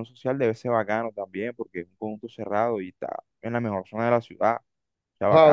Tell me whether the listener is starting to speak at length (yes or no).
yes